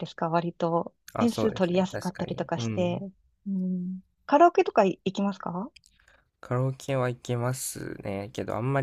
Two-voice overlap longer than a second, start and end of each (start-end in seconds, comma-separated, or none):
1.1-3.0